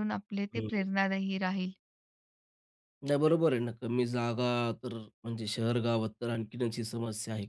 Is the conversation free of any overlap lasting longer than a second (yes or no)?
yes